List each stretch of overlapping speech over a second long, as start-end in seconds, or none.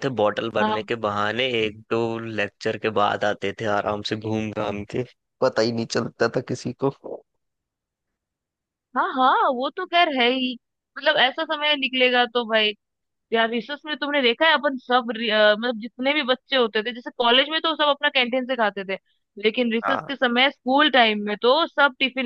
none